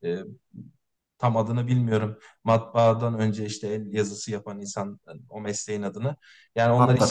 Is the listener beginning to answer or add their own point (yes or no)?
no